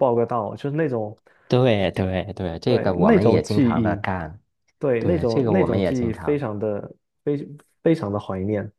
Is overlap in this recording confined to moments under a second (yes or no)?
no